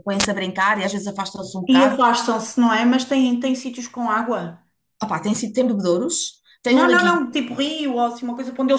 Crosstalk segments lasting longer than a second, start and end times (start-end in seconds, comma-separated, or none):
none